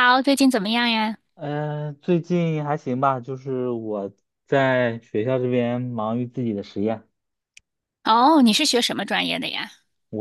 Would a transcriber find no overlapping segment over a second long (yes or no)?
yes